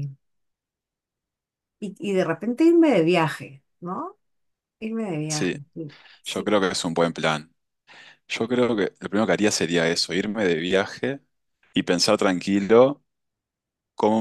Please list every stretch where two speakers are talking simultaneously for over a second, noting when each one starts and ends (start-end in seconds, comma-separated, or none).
none